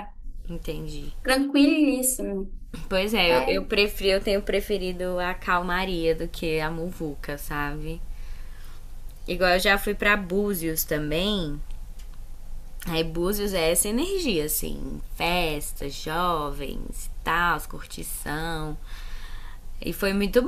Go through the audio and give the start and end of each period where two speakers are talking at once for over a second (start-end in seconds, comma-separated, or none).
none